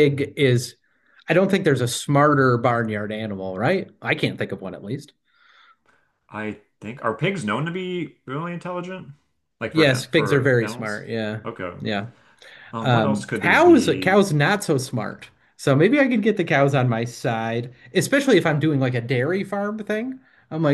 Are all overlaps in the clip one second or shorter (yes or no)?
no